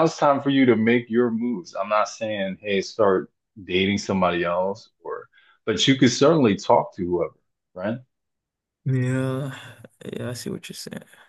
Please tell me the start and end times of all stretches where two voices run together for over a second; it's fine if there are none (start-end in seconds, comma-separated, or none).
none